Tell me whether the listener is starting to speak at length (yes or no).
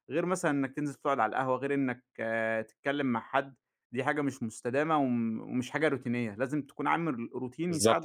yes